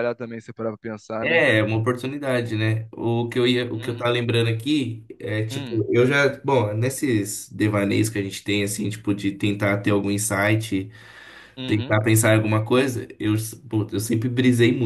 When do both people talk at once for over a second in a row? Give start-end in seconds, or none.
none